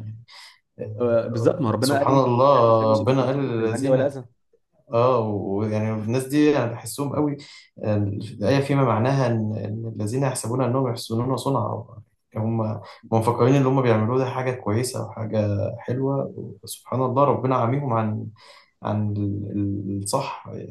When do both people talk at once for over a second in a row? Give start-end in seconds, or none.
1.0-4.1